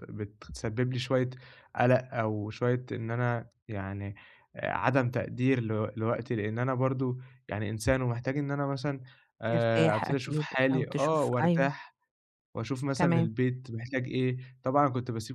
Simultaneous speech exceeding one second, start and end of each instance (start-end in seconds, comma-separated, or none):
9.4-11.7